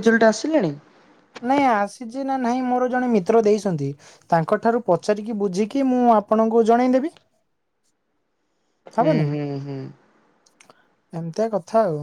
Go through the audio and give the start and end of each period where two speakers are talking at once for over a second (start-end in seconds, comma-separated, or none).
none